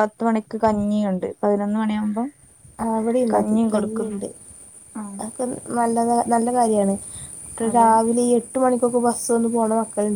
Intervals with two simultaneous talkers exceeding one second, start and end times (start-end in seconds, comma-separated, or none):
none